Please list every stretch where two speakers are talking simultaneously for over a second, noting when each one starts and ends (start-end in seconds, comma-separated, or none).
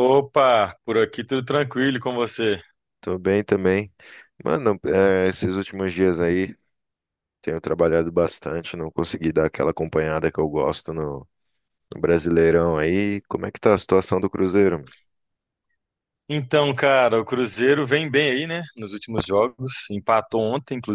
none